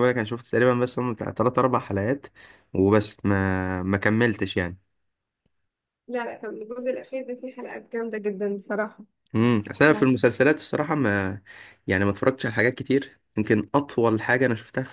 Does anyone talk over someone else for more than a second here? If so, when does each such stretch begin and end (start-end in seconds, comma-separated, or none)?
none